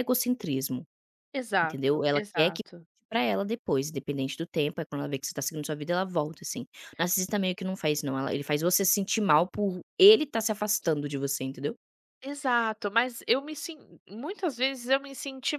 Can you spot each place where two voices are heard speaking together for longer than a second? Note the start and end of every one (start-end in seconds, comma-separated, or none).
1.6-2.9